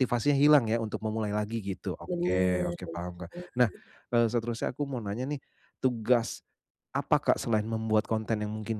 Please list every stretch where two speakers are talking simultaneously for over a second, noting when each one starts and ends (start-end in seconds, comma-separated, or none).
2.1-3.7